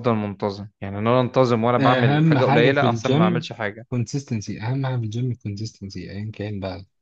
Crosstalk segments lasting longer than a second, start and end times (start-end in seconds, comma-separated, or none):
1.8-3.5